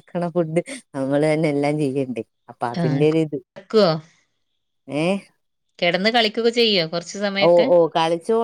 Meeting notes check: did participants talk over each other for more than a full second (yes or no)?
no